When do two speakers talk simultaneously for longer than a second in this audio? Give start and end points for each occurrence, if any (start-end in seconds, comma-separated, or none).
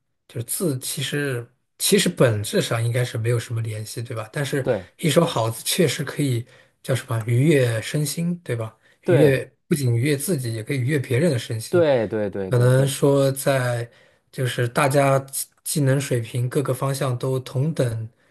none